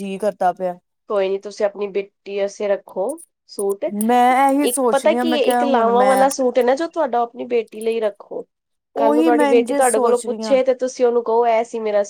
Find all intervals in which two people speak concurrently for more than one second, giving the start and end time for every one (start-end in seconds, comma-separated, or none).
4.6-6.2, 9.0-10.6